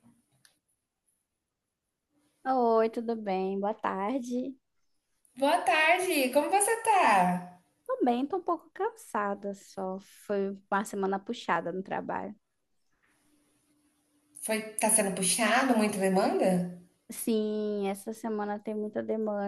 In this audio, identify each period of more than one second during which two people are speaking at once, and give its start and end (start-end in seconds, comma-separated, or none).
none